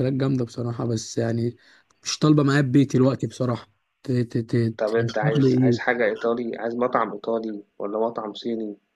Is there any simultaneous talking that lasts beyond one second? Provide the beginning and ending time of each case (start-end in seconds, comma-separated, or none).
4.8-6.0